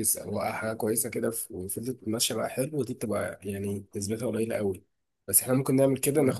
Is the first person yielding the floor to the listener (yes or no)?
no